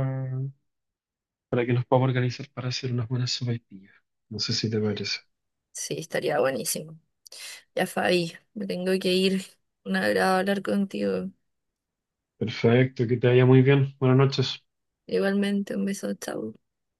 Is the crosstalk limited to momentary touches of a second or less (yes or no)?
yes